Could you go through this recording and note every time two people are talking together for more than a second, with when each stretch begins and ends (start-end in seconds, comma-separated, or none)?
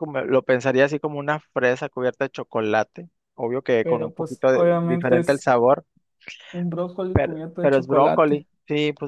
3.8-5.5, 7.1-8.4